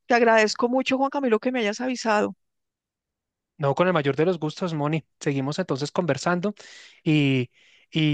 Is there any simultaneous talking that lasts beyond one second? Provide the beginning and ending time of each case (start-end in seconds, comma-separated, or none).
none